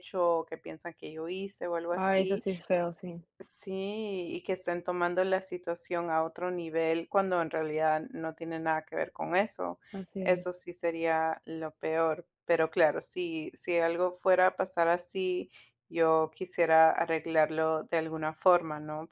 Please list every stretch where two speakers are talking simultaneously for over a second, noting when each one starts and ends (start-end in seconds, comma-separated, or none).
none